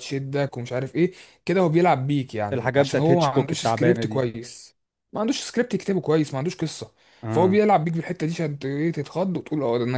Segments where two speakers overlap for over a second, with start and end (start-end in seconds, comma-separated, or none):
2.5-4.2